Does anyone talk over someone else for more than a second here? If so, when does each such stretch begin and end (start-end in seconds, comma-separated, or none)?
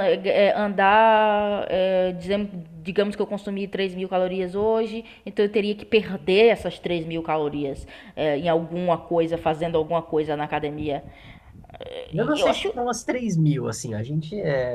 none